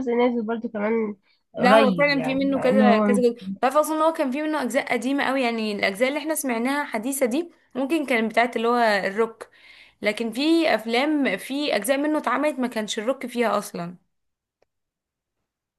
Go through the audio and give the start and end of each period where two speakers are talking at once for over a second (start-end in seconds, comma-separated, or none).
1.6-3.2